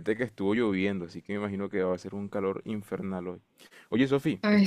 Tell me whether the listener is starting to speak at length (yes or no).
no